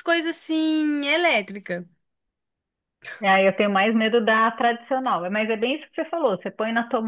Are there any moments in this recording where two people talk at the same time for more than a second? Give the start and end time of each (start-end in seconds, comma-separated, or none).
none